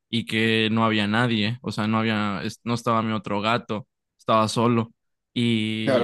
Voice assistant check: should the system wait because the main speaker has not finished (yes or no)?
no